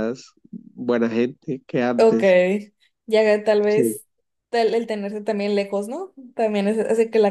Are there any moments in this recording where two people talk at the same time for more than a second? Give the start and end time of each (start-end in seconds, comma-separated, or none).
none